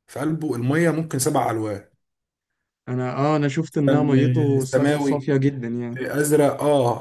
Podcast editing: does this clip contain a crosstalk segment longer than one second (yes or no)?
yes